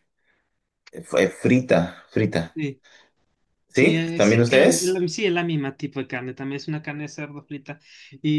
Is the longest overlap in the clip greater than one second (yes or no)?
yes